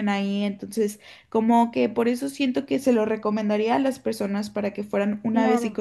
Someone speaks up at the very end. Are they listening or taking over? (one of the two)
listening